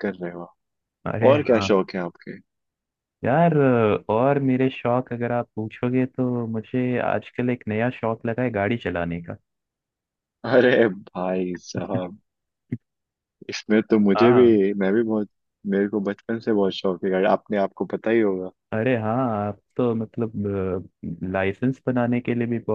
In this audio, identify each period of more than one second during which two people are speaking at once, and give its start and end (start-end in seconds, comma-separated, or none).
none